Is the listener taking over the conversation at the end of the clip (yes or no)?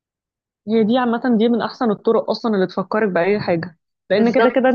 no